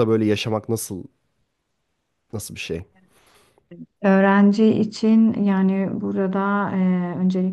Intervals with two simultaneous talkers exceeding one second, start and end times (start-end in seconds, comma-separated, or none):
none